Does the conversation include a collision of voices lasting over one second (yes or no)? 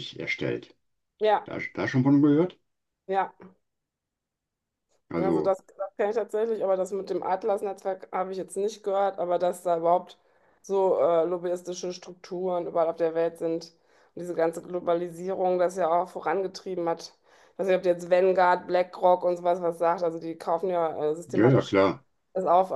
no